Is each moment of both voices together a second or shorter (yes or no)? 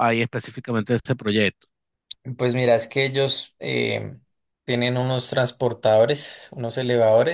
yes